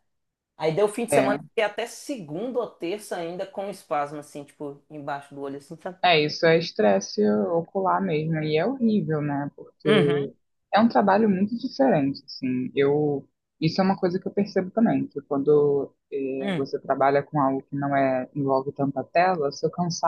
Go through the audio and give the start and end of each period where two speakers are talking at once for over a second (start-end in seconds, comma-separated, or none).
none